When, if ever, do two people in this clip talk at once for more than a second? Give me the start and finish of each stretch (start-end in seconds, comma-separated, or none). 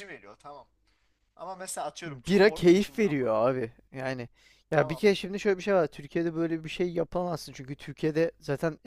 2.1-3.4